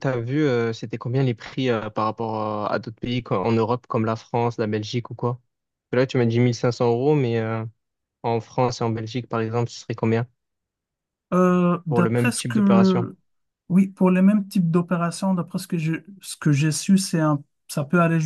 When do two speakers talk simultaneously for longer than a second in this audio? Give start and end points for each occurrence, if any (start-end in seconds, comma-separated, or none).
11.9-13.1